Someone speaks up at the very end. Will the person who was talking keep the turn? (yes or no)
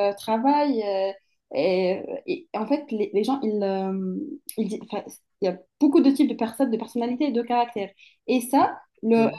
yes